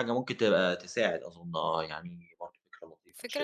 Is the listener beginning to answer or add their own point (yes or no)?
yes